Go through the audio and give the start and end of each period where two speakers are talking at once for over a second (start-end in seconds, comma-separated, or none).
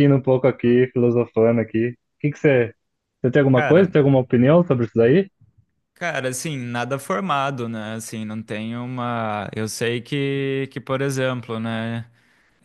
none